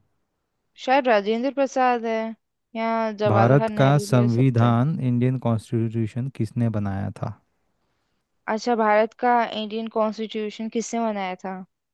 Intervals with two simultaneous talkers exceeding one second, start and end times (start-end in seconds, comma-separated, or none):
3.3-4.8